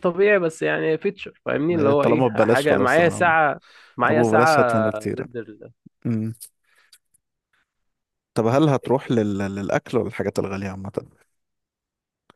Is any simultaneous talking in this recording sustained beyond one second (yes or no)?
yes